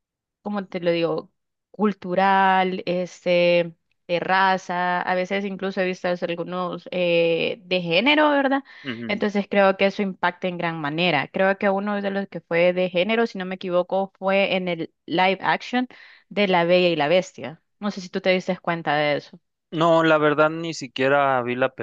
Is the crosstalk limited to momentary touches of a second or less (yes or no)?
yes